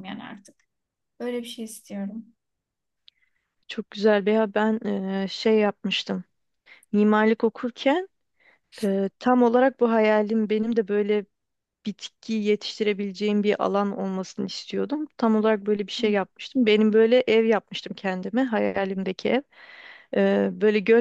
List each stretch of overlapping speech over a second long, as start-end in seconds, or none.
none